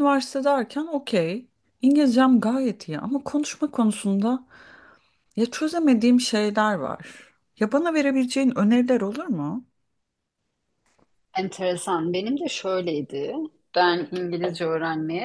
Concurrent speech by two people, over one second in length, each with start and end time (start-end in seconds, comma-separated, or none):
none